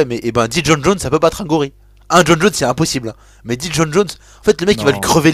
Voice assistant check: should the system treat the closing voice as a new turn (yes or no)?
no